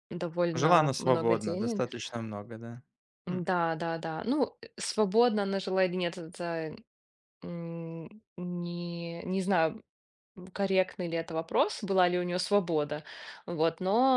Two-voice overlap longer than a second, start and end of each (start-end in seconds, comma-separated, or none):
0.5-1.8